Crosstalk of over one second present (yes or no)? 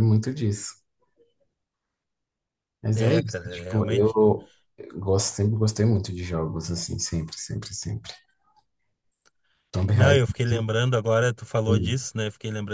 yes